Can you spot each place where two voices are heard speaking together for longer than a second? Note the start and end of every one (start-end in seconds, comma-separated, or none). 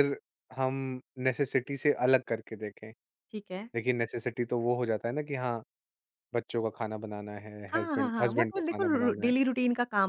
7.7-9.3